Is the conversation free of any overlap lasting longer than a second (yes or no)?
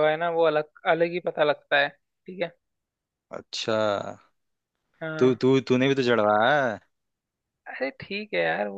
yes